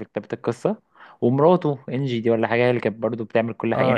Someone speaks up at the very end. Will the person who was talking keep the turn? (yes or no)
yes